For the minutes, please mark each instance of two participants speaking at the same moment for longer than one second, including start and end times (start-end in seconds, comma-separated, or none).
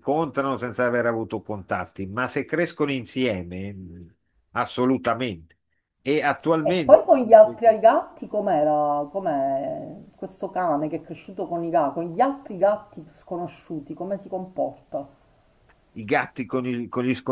none